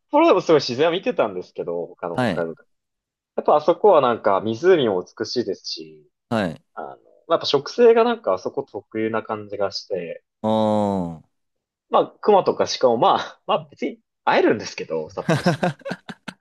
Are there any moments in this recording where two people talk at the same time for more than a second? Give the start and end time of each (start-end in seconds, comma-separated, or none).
none